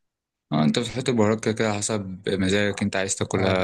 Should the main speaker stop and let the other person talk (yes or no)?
yes